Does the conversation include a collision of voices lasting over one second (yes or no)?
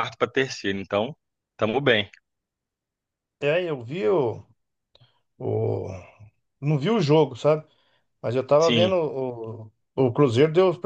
no